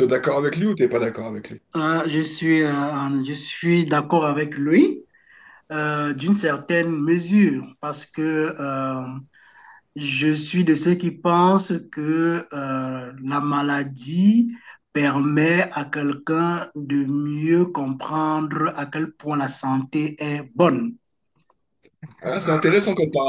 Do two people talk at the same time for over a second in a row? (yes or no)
no